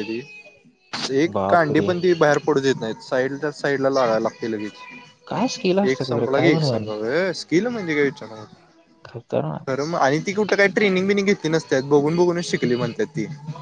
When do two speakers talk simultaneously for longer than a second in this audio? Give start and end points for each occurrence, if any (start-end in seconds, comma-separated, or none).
5.3-6.8